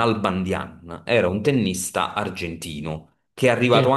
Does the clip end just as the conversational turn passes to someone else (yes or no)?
no